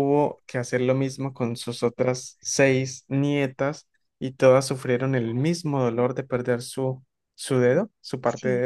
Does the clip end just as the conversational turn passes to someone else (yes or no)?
yes